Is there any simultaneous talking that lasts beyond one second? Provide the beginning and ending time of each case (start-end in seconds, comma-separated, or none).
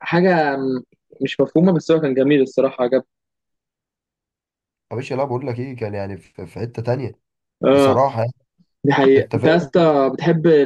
none